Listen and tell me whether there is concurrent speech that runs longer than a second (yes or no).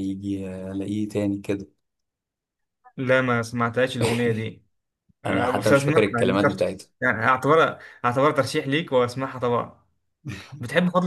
yes